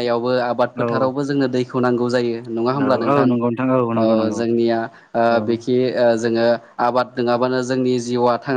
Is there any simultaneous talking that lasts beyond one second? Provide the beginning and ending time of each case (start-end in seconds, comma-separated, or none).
none